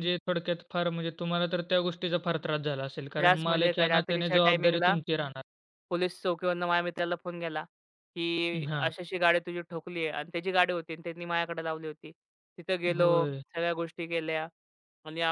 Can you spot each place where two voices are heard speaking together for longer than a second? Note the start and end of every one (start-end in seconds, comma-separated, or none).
3.2-4.9